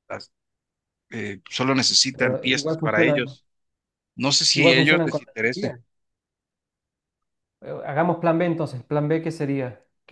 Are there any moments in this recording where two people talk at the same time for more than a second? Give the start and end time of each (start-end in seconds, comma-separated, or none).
2.1-3.4, 4.5-5.8